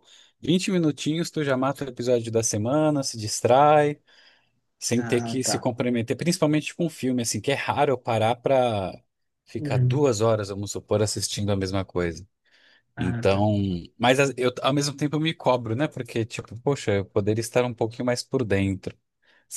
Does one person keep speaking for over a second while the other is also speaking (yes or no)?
no